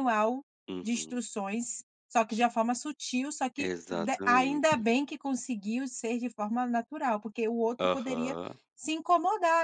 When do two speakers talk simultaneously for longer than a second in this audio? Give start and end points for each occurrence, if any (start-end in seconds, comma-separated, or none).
3.6-4.8